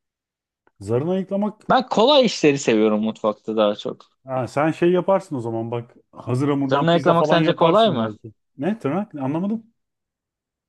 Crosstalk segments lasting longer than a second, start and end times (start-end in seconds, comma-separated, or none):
6.7-8.1